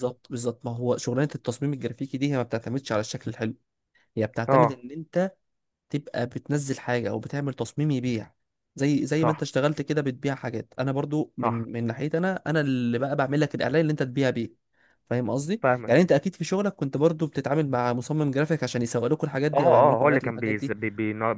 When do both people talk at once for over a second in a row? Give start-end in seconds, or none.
19.5-20.8